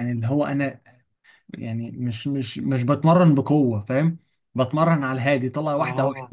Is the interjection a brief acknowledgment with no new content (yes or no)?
yes